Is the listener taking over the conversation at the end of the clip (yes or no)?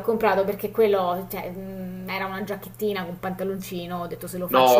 no